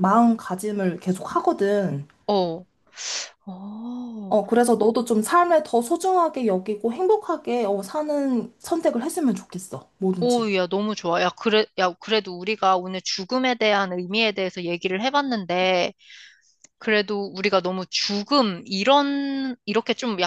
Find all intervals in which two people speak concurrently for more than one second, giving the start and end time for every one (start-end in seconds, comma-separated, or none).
none